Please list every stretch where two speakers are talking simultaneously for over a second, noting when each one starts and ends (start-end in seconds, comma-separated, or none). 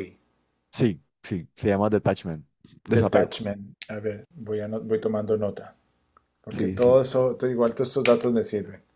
none